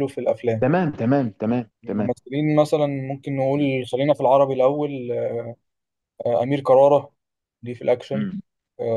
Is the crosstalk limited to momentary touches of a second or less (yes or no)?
yes